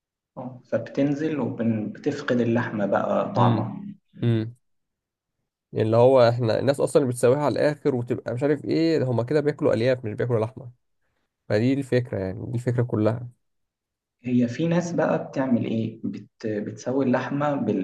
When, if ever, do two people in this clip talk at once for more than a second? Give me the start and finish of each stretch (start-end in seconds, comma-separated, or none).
none